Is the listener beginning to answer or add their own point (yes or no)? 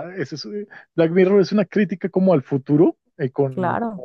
no